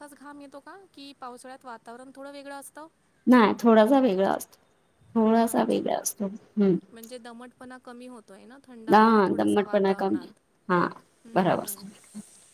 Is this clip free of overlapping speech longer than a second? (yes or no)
no